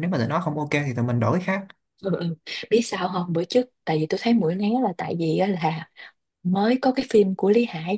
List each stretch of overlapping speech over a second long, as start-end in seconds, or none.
none